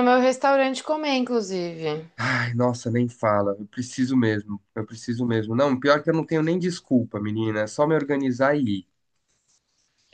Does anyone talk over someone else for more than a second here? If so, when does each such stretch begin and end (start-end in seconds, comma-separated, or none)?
none